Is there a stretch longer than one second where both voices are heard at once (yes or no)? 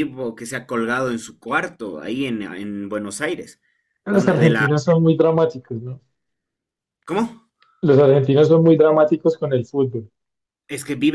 no